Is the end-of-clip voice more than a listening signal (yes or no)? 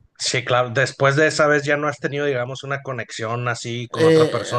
yes